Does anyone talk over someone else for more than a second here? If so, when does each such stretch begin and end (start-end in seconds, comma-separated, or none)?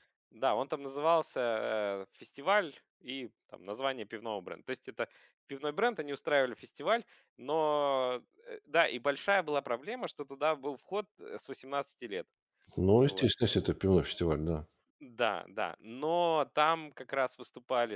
none